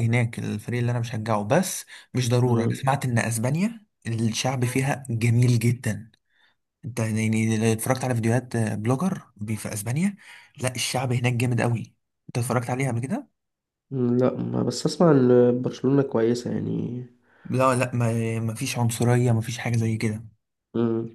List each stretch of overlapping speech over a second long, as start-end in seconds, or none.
none